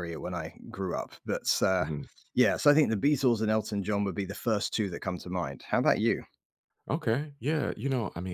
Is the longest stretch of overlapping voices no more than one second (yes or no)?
yes